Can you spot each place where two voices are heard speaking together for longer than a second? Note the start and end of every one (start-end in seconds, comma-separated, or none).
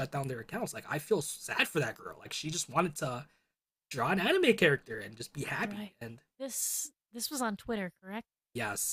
none